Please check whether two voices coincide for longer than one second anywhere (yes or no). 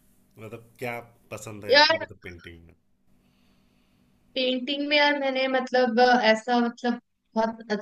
no